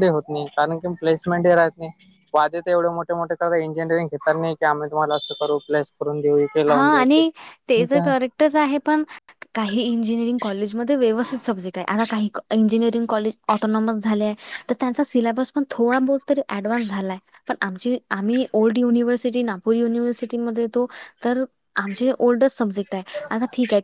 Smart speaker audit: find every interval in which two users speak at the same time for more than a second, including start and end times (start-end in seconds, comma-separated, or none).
none